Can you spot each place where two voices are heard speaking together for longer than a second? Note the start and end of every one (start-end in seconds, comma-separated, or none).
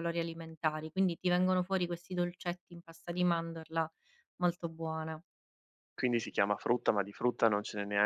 none